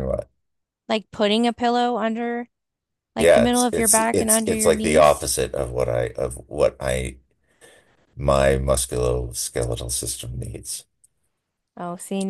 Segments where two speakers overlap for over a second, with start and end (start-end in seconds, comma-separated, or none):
3.2-5.3